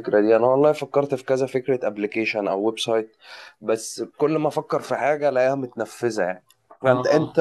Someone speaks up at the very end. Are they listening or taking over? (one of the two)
listening